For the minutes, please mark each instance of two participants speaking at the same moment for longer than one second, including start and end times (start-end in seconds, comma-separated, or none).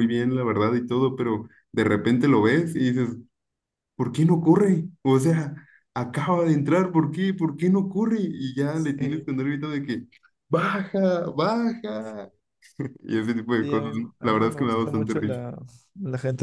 13.6-15.4